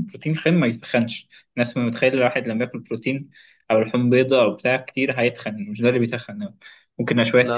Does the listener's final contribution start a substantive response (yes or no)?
no